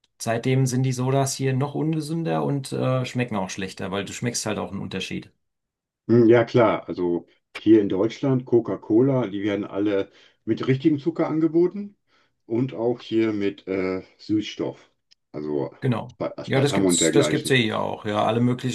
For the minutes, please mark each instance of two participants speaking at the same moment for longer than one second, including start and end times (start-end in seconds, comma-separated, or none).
16.2-17.6